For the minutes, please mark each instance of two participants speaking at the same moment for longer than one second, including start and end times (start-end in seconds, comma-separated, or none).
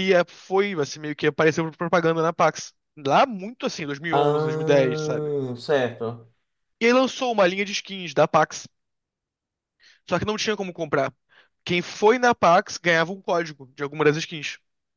4.1-5.3